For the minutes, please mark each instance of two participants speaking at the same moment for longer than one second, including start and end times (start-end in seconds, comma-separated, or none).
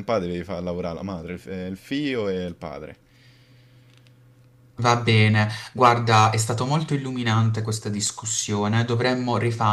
none